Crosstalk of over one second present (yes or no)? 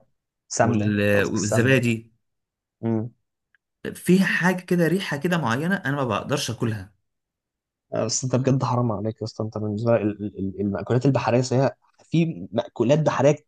yes